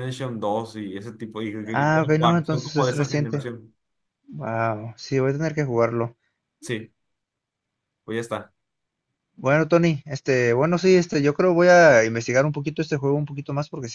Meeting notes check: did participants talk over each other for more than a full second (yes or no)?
yes